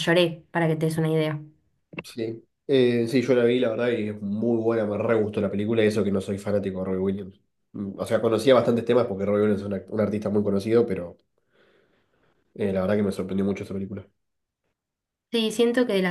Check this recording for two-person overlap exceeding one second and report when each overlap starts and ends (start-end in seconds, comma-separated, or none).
none